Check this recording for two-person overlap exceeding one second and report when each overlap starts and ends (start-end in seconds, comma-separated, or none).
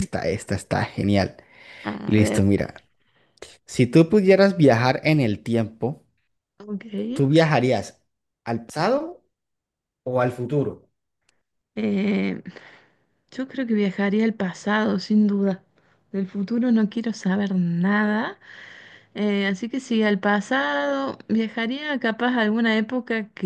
none